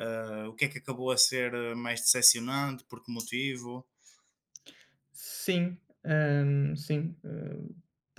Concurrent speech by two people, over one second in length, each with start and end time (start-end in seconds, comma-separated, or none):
none